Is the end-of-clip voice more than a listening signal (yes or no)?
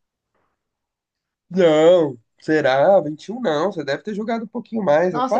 yes